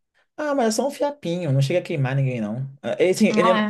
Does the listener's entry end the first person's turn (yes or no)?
no